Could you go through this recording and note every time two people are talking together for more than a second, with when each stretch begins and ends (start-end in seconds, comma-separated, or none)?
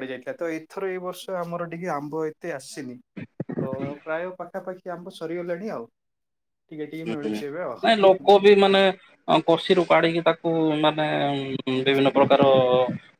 none